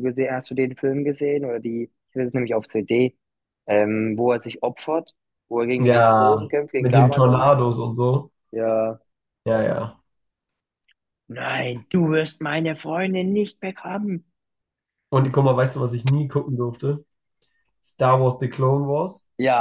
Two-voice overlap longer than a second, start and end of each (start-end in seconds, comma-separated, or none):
5.8-7.5